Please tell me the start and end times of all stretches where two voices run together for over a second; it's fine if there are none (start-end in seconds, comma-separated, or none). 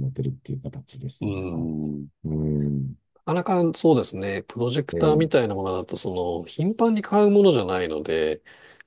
none